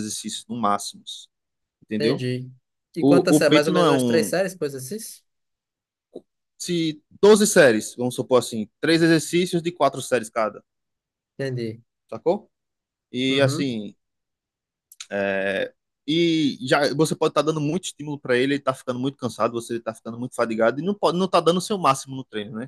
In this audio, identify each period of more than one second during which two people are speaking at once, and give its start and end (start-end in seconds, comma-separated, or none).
3.0-4.3